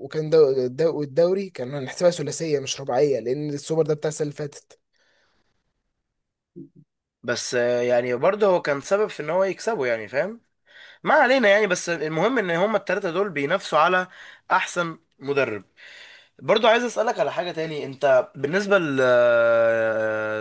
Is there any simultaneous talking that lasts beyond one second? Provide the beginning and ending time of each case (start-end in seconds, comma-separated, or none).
none